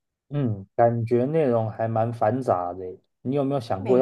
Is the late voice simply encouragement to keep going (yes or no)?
yes